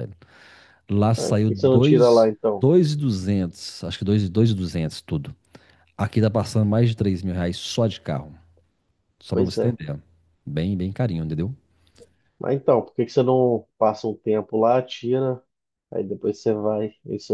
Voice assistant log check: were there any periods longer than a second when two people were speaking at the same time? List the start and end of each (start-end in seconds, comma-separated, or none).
1.2-2.6